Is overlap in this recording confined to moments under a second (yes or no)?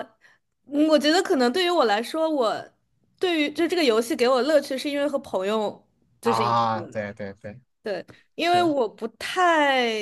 yes